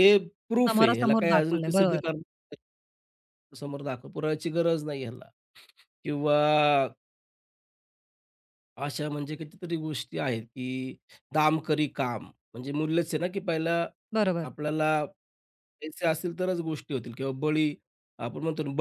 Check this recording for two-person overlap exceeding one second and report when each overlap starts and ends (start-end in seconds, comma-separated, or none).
0.7-2.0